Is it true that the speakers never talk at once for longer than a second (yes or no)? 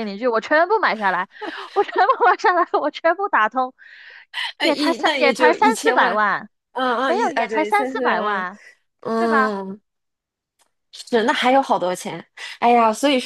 no